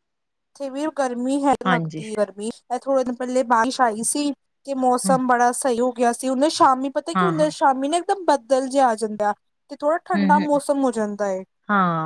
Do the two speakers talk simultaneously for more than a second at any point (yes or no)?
no